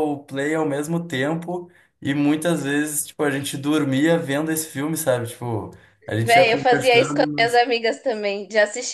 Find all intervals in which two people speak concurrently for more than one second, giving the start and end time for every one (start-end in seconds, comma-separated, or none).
6.2-7.5